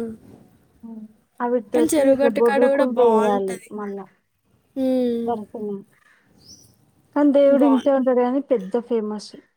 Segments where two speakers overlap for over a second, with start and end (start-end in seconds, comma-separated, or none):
1.8-3.7